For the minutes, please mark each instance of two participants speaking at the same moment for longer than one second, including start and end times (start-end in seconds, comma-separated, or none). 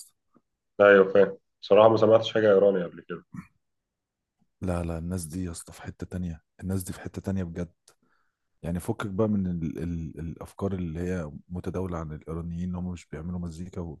none